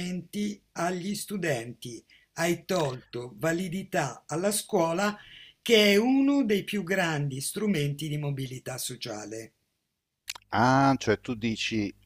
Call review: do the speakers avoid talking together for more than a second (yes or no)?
yes